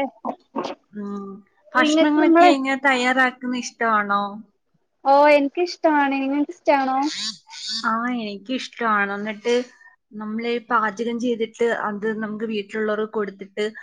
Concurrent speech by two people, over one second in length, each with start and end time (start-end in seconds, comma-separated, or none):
none